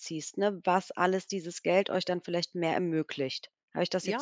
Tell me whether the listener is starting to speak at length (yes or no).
yes